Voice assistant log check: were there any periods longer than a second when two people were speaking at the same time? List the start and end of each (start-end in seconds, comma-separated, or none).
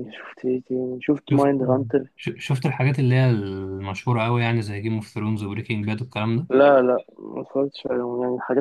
none